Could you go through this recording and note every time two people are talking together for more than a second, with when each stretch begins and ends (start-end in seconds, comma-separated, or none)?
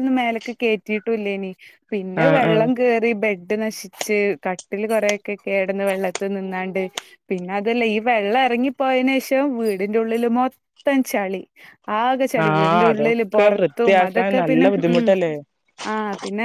12.4-15.0